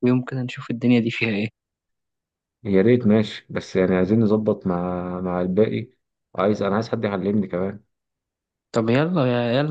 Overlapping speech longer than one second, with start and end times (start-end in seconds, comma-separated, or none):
none